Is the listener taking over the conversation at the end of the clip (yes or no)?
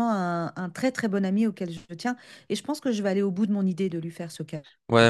yes